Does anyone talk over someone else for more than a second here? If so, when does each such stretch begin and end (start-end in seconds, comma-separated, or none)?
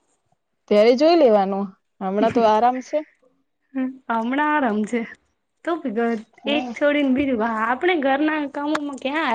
none